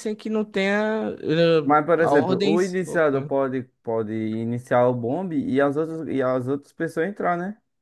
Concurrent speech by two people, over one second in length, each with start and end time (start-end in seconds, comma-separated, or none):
1.6-3.3